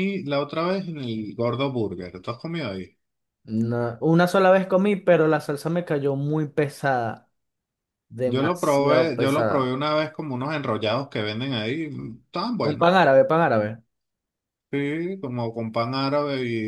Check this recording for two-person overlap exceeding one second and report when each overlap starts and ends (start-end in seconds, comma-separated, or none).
8.2-9.8